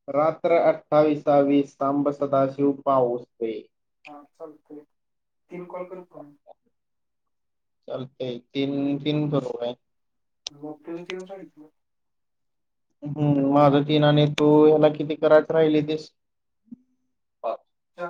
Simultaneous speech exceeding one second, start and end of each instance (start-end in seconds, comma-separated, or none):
none